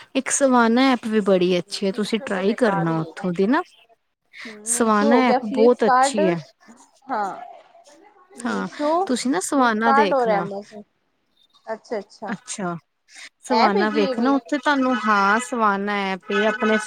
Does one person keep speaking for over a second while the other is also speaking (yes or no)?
yes